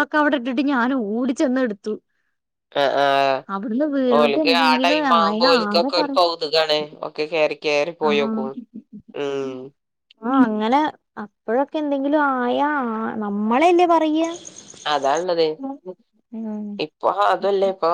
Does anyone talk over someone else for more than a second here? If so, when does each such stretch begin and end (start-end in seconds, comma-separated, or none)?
4.2-6.2